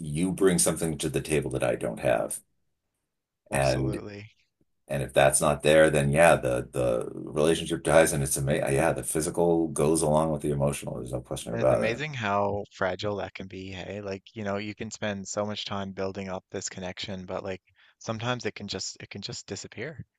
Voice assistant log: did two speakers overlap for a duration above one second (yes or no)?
no